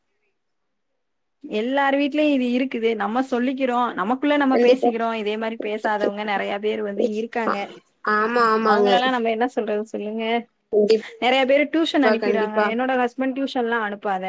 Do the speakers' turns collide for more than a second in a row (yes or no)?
no